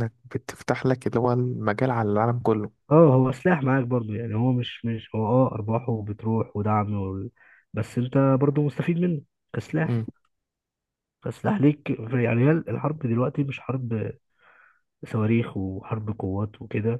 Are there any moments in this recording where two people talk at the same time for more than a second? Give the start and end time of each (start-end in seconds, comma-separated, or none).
none